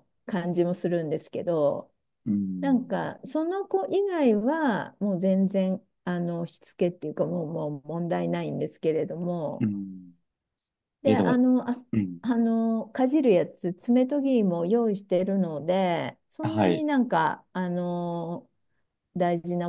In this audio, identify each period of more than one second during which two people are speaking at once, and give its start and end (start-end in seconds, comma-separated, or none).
none